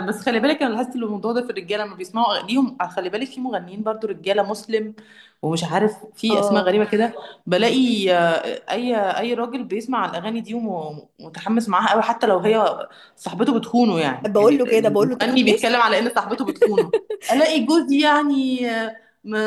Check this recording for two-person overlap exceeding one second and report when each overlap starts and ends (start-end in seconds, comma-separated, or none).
14.3-15.7